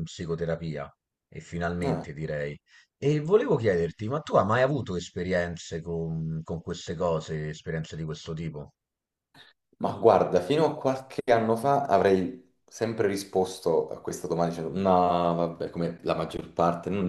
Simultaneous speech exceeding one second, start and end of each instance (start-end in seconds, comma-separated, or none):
none